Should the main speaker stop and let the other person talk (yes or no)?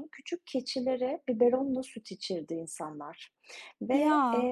no